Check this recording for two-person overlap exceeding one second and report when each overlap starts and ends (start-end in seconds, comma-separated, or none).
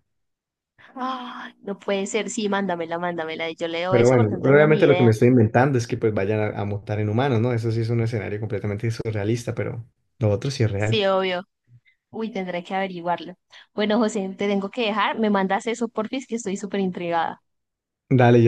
3.9-5.1